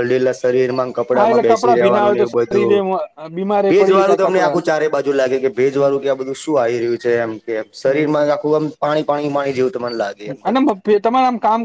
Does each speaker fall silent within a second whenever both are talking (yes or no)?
yes